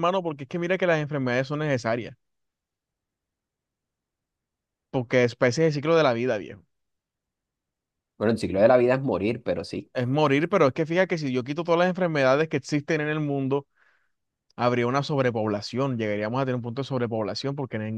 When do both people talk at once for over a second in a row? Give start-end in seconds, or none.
none